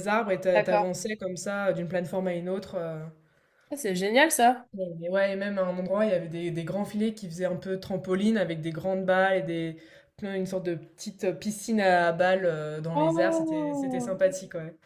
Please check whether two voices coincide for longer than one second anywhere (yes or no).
yes